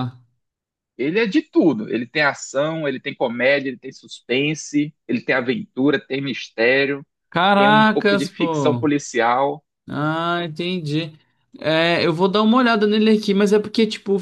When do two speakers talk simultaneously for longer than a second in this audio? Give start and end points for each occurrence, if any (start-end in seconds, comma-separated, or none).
7.5-8.9